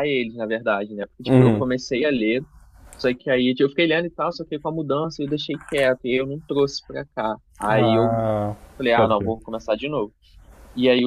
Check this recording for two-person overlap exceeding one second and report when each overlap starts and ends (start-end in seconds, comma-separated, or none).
none